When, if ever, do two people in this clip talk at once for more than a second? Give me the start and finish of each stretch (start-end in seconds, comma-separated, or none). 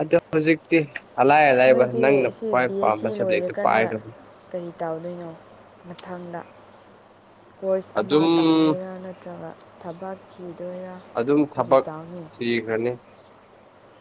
1.6-3.9